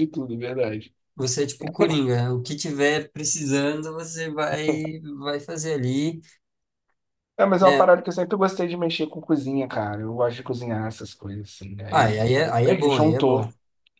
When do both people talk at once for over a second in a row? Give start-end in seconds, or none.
11.9-13.4